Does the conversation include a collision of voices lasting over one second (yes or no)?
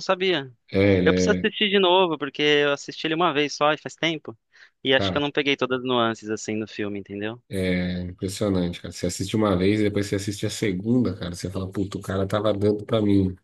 no